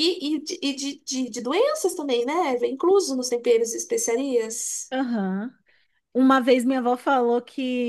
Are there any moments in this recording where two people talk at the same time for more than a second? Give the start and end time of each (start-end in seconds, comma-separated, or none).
none